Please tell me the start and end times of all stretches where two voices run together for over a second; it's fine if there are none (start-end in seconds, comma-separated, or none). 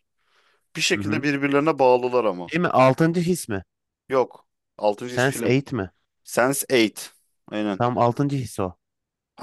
none